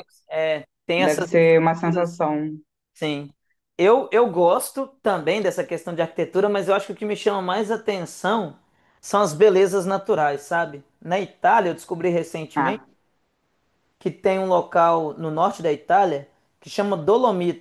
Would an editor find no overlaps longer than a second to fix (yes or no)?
no